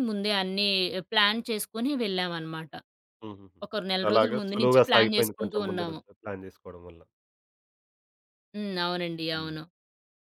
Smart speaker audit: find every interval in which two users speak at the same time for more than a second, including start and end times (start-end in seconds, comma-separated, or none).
4.1-6.0